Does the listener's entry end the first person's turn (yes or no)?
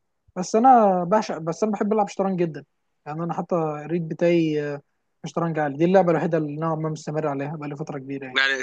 yes